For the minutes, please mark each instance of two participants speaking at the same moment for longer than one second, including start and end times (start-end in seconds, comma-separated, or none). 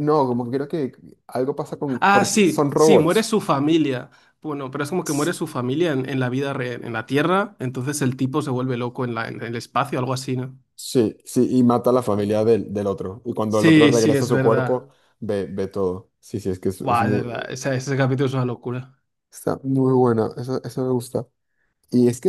1.9-3.3, 13.5-14.8